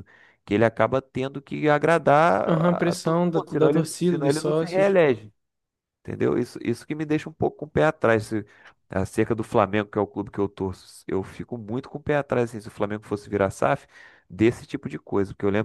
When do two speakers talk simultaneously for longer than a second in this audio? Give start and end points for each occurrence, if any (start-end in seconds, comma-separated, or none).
2.5-4.9